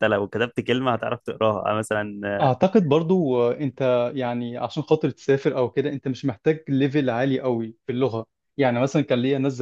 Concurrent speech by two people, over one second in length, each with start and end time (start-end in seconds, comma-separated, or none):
none